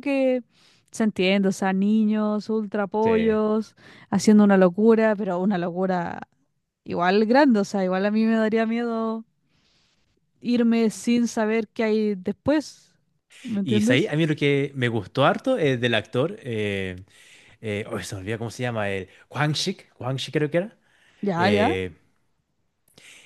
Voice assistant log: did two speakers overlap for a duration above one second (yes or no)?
no